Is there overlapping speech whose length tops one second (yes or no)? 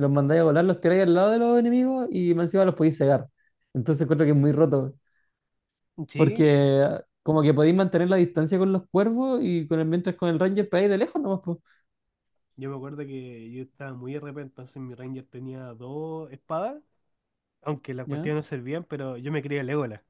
no